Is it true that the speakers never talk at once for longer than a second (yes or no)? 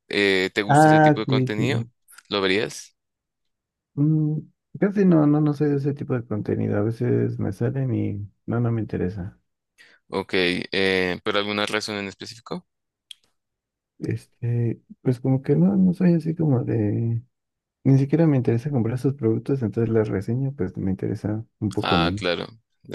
no